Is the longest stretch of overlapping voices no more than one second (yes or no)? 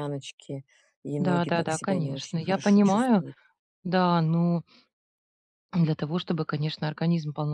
no